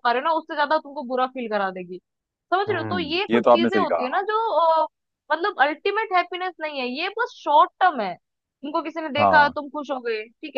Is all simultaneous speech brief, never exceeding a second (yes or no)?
no